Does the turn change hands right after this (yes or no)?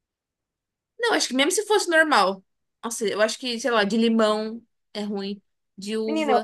yes